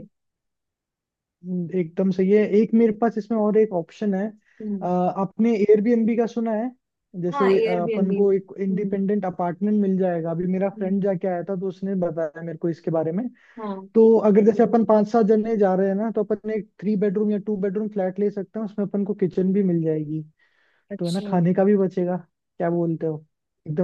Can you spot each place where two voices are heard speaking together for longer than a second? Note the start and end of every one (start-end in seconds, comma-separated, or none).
7.3-9.0